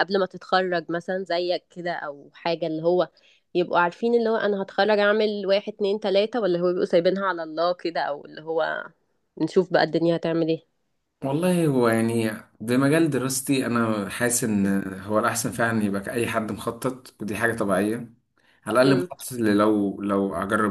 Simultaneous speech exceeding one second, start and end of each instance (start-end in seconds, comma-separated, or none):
none